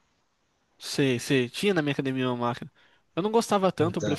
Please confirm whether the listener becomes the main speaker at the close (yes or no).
no